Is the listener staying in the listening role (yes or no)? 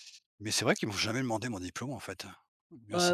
no